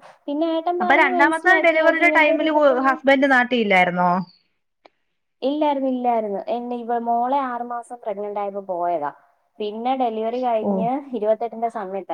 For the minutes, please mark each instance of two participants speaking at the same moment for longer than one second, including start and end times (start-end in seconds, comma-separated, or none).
0.8-3.0